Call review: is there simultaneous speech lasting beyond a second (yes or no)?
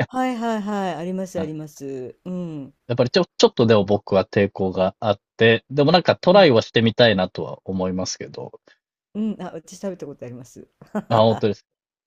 no